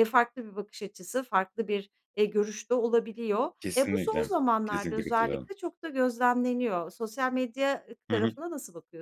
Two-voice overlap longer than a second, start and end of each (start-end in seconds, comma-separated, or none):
3.6-5.5